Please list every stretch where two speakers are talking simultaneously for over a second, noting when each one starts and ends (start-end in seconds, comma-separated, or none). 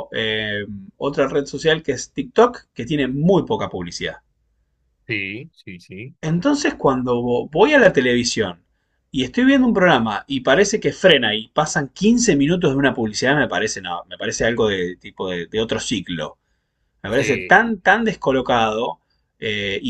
none